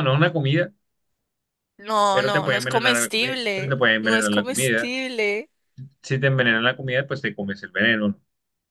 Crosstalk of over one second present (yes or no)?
yes